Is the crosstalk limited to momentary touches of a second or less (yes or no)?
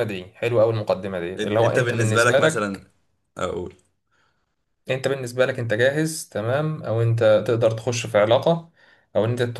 no